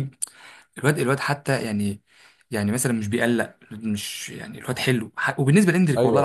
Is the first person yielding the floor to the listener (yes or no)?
no